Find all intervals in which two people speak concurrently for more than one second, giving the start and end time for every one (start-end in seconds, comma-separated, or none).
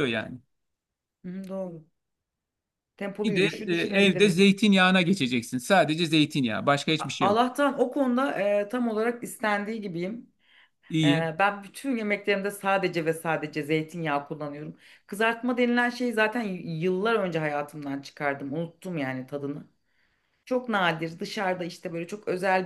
3.2-4.6